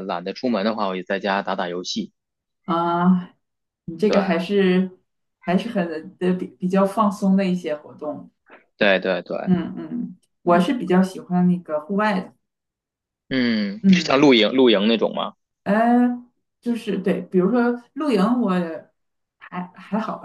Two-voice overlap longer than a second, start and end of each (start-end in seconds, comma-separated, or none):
none